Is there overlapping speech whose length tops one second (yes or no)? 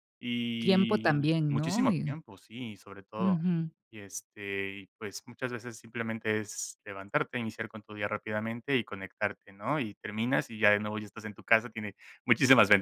yes